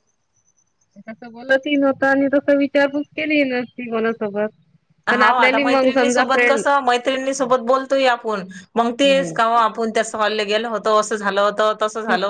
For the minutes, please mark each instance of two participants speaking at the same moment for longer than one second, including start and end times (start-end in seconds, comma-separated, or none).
5.2-6.6